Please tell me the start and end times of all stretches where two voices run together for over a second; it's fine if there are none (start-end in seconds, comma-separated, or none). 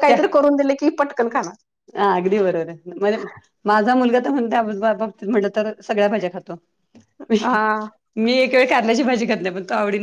none